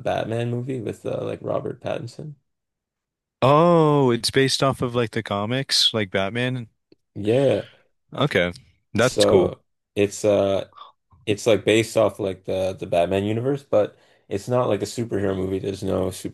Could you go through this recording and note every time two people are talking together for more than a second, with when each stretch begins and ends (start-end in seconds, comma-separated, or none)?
none